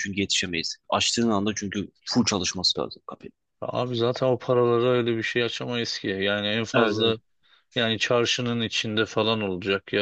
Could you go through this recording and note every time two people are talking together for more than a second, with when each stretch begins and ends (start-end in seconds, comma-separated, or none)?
none